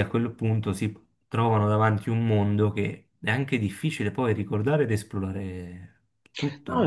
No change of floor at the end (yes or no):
no